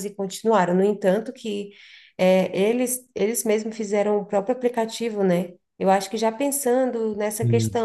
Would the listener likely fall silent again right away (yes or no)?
yes